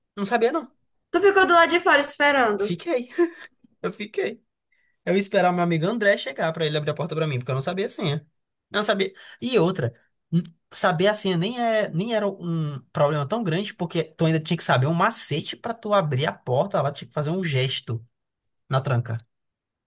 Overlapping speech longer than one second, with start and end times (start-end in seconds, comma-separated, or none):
none